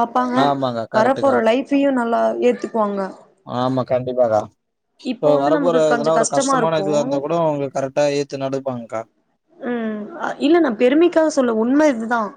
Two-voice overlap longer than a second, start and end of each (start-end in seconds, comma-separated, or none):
5.2-6.9